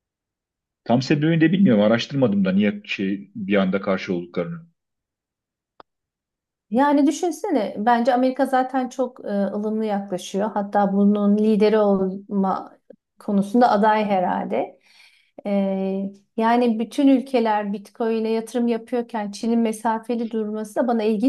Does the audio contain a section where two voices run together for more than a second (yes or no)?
no